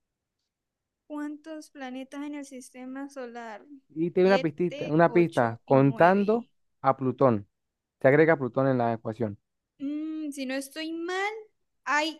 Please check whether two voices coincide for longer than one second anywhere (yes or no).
yes